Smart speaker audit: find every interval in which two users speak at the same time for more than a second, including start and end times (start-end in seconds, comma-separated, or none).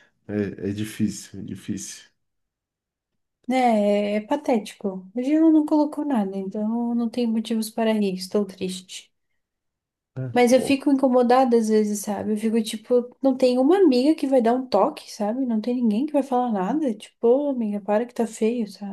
none